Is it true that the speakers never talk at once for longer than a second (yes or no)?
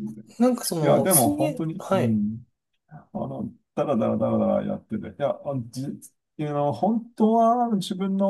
no